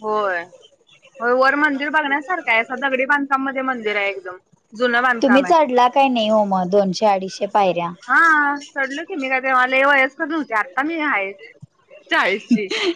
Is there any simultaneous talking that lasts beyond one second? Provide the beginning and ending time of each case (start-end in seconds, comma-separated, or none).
none